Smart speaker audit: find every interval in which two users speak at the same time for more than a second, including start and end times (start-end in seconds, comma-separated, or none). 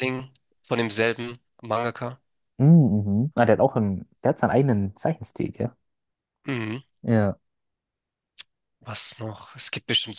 none